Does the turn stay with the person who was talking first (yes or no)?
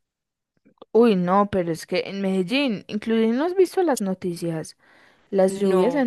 yes